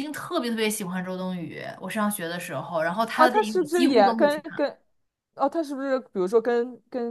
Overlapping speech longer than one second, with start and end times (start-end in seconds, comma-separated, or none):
3.1-4.6